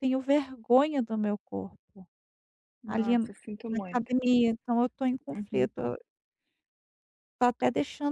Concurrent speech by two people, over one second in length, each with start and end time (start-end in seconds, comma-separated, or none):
2.9-4.1